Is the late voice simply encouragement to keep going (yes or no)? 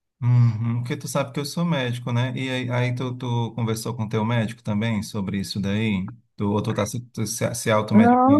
no